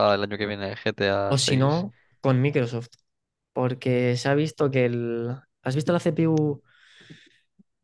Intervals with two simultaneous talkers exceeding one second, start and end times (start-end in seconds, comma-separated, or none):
none